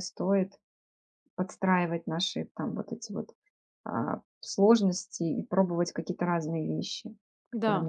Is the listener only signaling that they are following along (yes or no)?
no